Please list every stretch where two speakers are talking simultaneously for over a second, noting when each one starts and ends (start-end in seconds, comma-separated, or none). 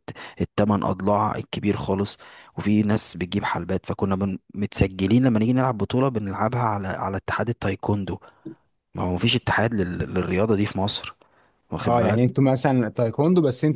none